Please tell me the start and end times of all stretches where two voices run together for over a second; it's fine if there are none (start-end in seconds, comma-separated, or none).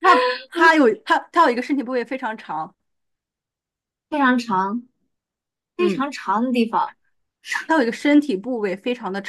none